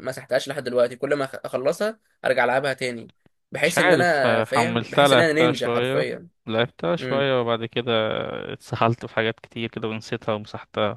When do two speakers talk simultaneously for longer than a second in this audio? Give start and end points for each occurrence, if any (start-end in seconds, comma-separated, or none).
3.6-6.1